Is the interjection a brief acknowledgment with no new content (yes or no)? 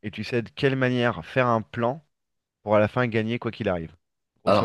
no